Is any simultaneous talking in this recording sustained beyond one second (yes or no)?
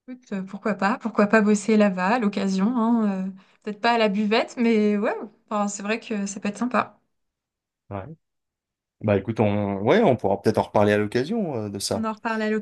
no